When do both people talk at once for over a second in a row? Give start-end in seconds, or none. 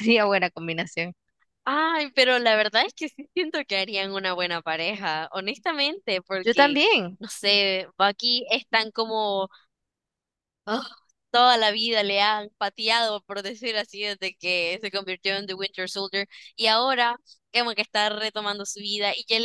none